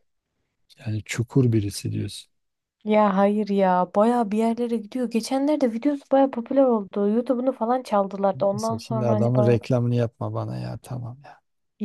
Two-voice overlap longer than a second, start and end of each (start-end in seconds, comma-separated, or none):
8.3-9.6